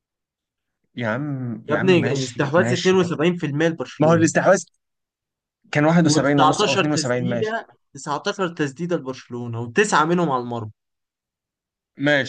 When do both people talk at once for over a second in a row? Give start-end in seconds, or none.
1.7-3.0, 6.1-7.6